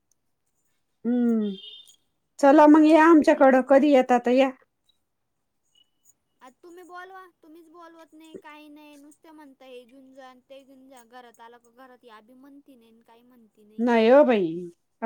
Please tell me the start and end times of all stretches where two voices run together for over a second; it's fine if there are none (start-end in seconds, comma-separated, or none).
2.6-3.9